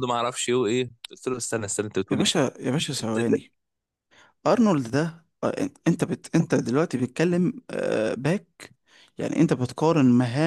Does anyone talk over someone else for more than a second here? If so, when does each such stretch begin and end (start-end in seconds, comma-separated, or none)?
none